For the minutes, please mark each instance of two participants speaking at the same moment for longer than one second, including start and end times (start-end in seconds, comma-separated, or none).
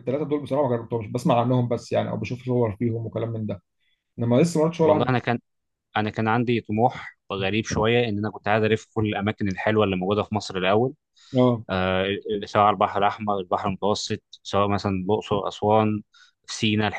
none